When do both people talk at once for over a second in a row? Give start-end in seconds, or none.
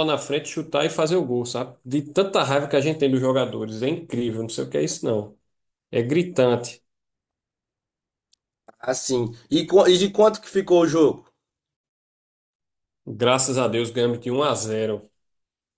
none